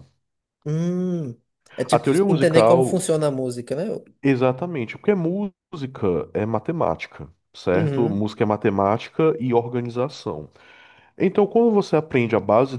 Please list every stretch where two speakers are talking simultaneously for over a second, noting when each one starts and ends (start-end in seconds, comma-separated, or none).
1.9-3.1